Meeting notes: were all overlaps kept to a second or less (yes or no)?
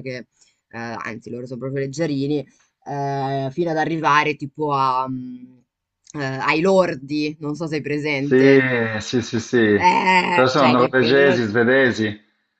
no